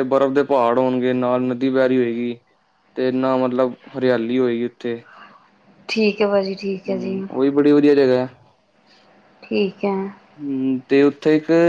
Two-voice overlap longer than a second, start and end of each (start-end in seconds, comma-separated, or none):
none